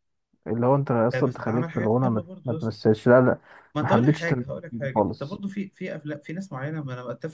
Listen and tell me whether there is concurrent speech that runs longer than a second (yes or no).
yes